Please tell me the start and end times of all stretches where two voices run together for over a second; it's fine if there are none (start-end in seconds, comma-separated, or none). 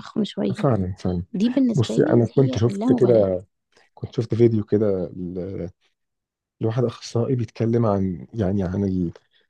1.8-3.3